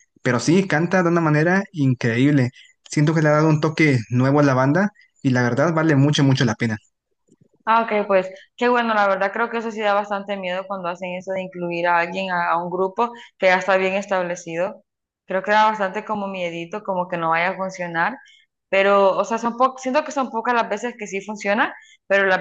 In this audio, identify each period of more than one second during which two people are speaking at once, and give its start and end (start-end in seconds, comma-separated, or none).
none